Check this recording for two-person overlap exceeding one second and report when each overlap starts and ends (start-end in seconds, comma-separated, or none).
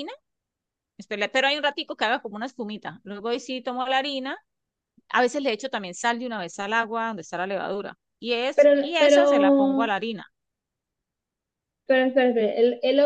8.5-9.9